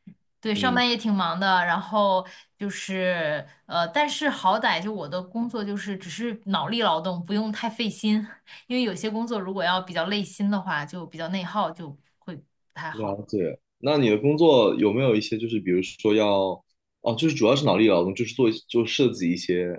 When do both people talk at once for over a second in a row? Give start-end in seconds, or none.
none